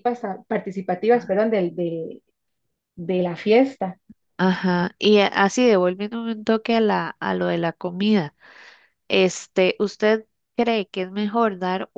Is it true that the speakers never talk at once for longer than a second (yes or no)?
yes